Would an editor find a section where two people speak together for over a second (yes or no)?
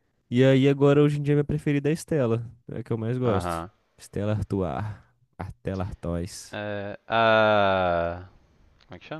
no